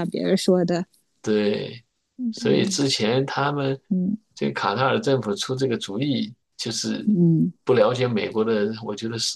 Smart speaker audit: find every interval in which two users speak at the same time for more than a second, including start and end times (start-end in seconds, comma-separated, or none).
none